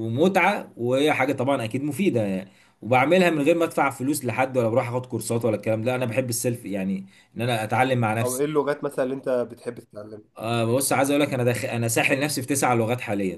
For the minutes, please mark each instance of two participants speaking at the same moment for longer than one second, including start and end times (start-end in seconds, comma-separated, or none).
none